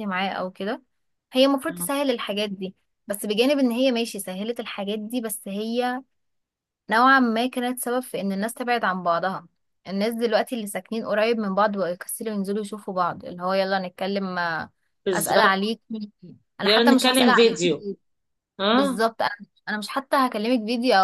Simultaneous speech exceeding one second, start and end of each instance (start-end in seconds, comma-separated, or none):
16.6-17.9